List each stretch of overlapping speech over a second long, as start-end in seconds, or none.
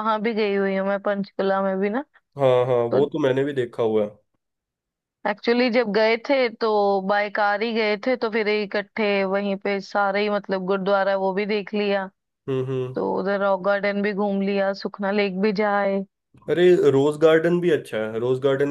none